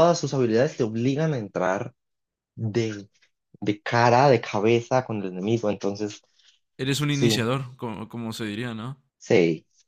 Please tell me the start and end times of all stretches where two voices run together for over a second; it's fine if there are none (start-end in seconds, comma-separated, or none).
none